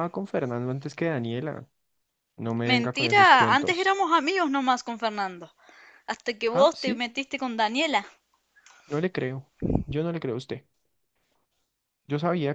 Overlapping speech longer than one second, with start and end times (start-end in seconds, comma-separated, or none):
2.6-4.0